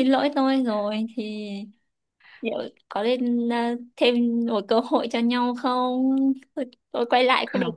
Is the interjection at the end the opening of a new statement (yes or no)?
no